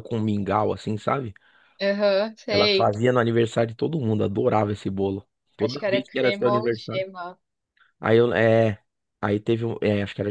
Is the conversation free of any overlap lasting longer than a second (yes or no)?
no